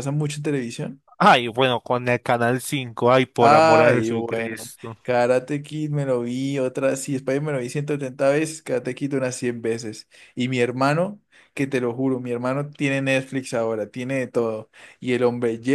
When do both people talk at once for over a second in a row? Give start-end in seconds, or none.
3.4-5.0